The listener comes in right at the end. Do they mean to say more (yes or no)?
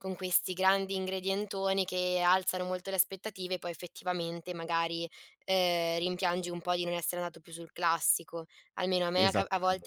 no